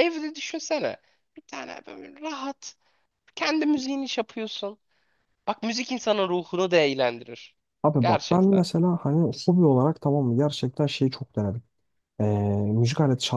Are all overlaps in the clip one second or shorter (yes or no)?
yes